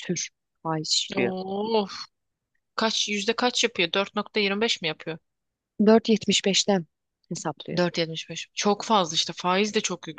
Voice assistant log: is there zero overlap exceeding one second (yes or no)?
yes